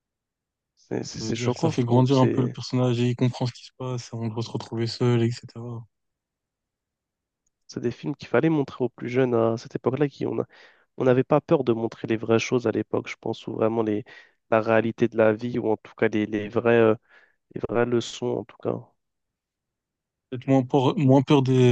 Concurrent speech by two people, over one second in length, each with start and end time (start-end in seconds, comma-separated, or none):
1.1-2.6